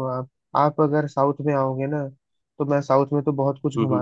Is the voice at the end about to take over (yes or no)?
no